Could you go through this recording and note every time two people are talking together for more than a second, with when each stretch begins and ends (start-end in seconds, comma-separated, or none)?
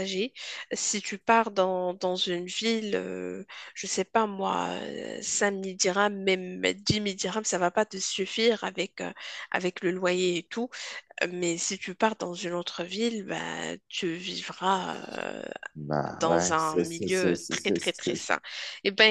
16.1-18.3